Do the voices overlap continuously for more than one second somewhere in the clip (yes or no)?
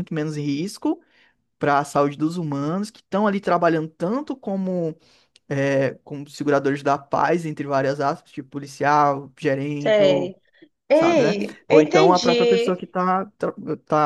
yes